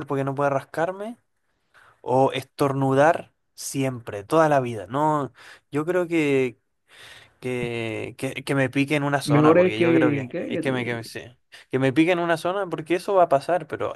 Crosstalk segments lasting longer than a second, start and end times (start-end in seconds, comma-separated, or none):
9.2-11.1